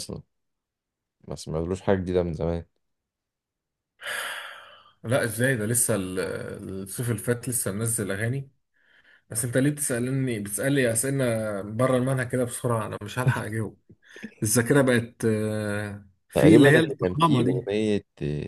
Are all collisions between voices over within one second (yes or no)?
no